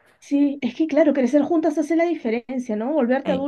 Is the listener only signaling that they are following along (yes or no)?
yes